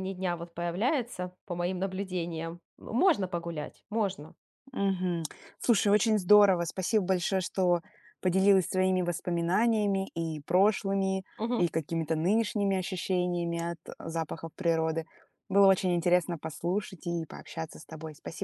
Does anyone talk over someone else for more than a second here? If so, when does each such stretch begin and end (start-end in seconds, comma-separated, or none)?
none